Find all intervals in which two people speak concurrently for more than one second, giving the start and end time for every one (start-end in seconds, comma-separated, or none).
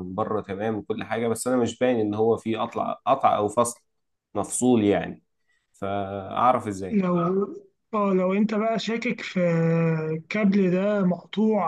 none